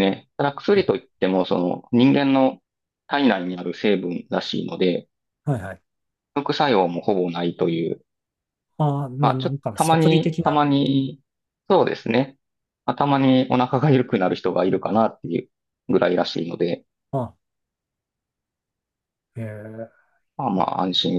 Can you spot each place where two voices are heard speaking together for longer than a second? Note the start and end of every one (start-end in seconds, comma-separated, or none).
9.2-10.6